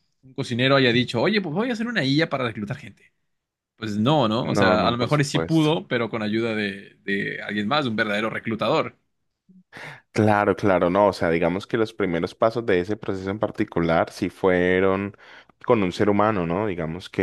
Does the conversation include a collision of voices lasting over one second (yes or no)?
yes